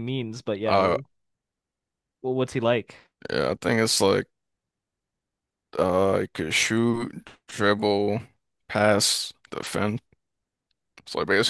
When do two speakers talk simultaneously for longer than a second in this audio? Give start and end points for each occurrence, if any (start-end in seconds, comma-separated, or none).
none